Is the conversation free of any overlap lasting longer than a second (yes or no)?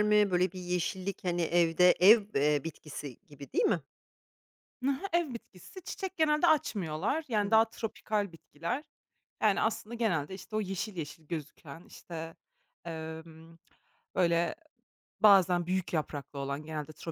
yes